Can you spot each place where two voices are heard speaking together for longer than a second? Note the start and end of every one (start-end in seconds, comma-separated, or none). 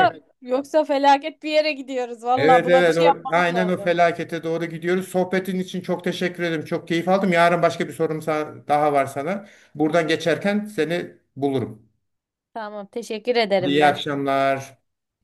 2.4-4.0